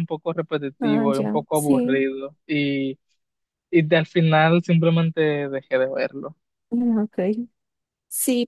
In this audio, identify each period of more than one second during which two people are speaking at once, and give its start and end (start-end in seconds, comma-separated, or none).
0.8-2.1